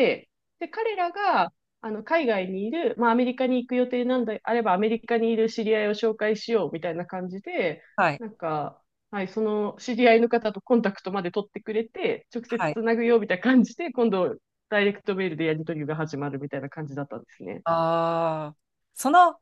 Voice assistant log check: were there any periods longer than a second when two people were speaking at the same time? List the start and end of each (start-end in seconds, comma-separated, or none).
none